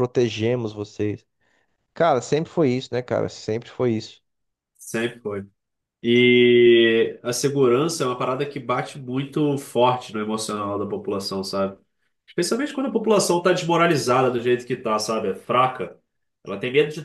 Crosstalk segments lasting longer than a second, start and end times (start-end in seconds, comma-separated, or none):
none